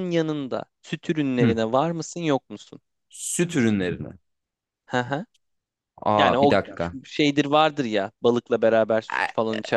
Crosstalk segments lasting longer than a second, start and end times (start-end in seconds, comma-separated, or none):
none